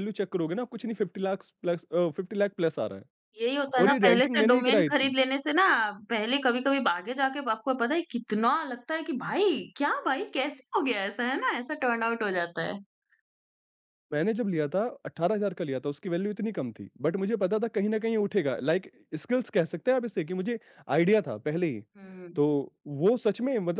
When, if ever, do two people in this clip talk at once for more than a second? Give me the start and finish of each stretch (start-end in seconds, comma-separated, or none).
3.8-5.1